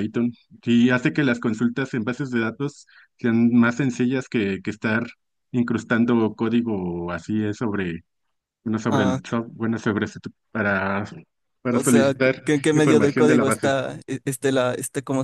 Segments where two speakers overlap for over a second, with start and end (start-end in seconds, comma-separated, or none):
11.7-13.7